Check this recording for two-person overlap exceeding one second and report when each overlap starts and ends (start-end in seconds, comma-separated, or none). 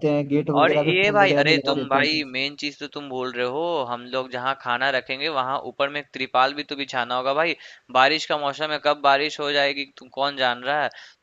0.6-2.3